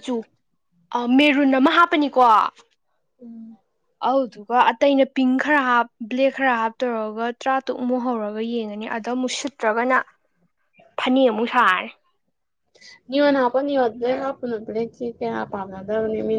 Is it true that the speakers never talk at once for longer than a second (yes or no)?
yes